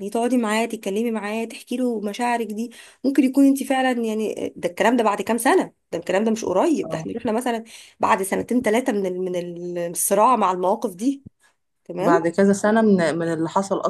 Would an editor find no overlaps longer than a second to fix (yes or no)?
yes